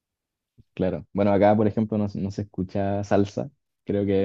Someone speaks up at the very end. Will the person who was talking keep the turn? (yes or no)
no